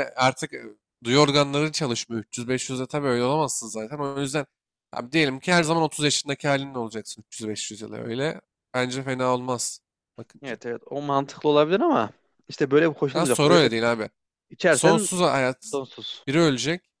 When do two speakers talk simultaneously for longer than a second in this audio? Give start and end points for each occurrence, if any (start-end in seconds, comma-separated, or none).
none